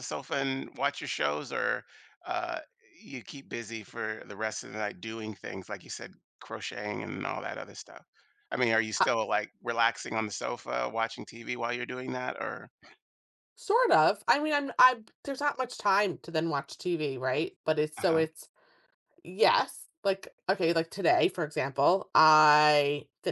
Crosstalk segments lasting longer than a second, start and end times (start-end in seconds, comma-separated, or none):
none